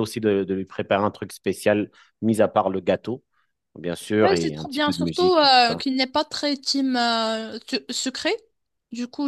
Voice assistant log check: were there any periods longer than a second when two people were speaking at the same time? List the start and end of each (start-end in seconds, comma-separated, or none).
4.2-5.8